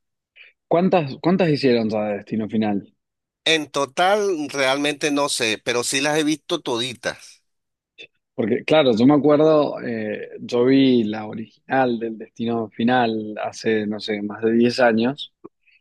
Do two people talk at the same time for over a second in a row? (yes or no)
no